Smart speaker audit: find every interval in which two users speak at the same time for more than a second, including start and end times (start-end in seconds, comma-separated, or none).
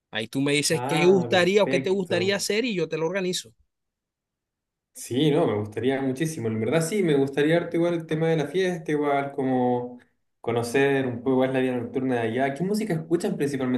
0.7-2.5